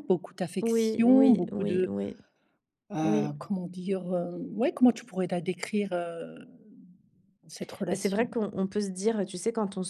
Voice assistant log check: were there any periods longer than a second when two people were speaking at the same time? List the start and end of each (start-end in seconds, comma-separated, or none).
0.6-1.9